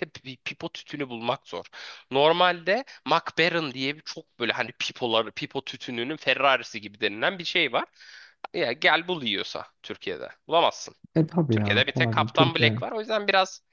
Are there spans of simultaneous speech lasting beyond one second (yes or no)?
yes